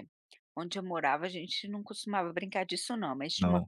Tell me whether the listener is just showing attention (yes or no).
yes